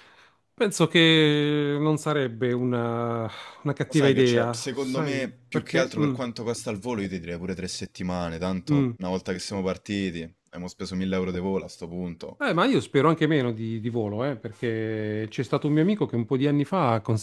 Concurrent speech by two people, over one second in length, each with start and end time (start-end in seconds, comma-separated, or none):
3.9-6.1